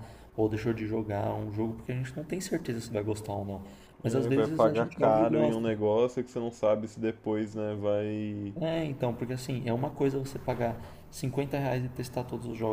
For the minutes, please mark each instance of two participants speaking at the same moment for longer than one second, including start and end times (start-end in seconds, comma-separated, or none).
4.0-5.6